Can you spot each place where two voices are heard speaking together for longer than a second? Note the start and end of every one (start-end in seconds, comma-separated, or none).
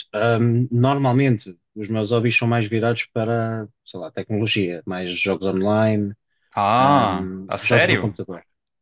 6.8-8.2